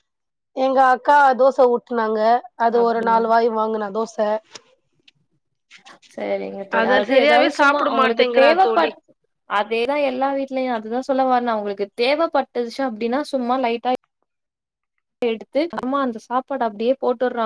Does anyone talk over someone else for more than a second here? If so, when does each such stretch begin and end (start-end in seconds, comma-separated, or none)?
6.8-8.9